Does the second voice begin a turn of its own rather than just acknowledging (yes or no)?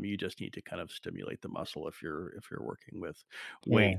no